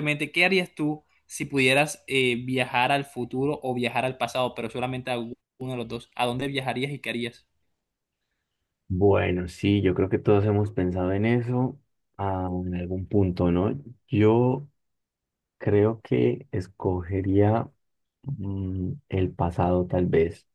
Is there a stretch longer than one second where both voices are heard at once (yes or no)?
no